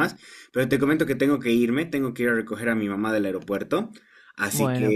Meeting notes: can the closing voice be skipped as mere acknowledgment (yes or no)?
yes